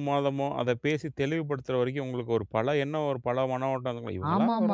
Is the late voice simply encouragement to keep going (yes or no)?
no